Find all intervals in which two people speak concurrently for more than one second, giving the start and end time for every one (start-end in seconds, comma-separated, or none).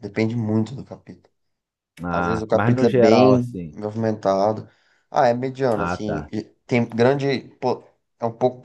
2.1-3.8